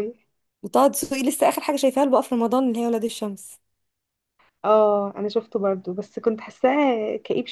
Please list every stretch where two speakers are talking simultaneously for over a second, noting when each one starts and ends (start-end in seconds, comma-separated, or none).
none